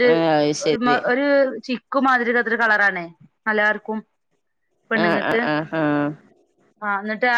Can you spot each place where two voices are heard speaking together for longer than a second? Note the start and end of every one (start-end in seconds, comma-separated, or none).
none